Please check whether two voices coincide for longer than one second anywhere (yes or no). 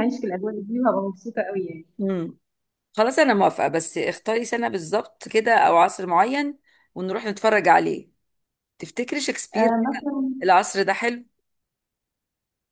no